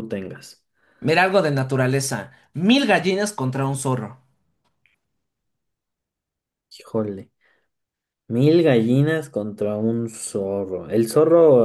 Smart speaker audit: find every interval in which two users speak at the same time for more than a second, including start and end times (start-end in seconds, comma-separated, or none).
none